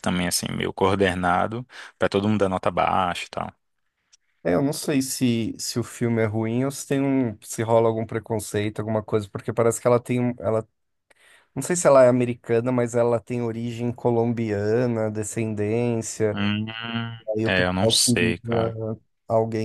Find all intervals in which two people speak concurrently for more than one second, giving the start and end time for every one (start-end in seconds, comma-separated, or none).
17.4-18.8